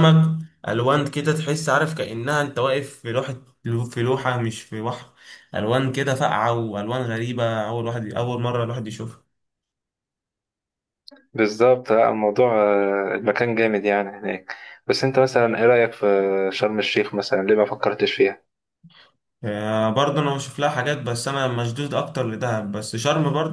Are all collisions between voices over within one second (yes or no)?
yes